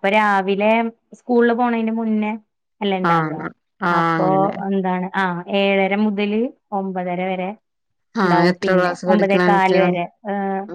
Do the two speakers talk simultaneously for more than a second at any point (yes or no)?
yes